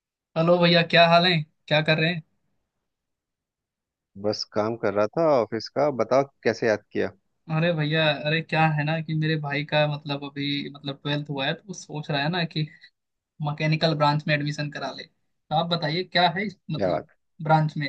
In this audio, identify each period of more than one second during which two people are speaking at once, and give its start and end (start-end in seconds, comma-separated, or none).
none